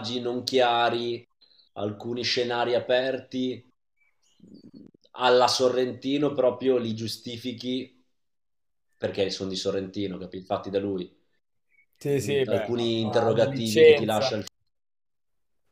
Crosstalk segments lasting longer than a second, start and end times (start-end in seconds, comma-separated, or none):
12.5-14.3